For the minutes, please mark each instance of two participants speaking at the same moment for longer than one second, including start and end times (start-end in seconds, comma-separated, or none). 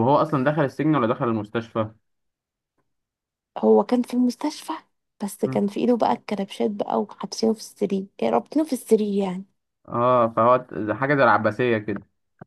none